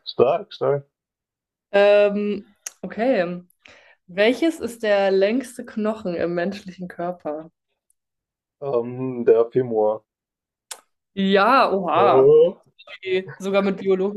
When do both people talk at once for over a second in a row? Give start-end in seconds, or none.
none